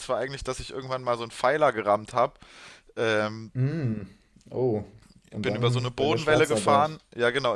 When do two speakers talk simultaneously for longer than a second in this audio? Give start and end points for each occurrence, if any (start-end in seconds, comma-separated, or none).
5.4-7.0